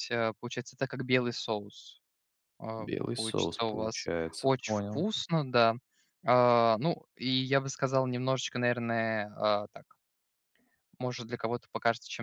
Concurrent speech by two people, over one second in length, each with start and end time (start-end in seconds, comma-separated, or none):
2.8-5.1